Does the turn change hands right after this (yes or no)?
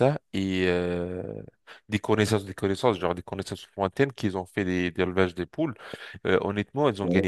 no